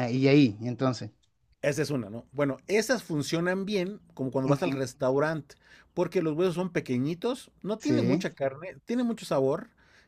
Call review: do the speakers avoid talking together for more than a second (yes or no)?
yes